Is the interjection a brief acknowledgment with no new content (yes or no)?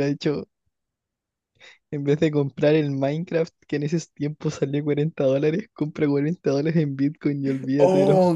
no